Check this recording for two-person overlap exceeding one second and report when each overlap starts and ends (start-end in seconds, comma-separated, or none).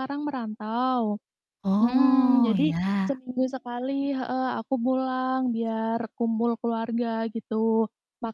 1.8-3.2